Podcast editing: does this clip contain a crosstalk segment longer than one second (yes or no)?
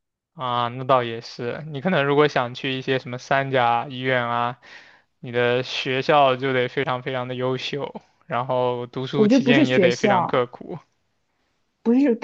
yes